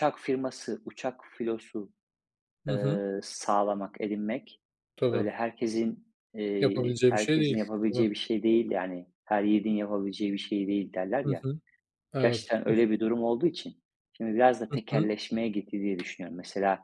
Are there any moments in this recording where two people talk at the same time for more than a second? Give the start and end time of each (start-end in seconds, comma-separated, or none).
6.6-8.1